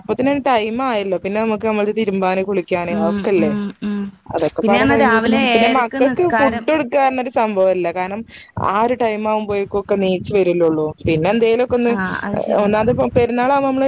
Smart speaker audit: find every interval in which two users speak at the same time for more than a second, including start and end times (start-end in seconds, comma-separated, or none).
4.6-6.6